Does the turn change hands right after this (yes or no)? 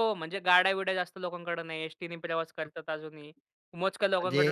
no